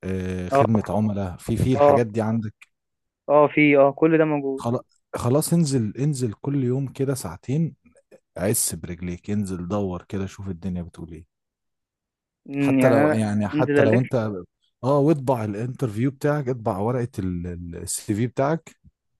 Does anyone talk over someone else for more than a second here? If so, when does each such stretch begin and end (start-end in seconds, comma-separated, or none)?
12.6-14.0